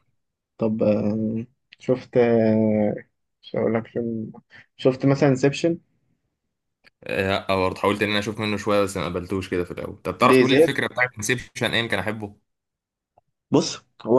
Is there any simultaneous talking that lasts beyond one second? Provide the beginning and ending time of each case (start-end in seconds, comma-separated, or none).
none